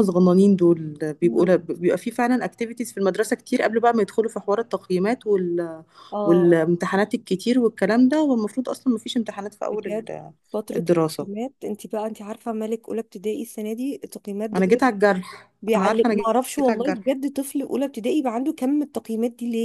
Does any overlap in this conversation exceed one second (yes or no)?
yes